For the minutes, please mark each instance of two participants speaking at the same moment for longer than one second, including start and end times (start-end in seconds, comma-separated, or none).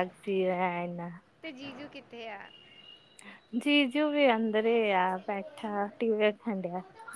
4.5-5.8